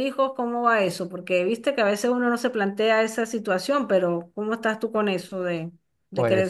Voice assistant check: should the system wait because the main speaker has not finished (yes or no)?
no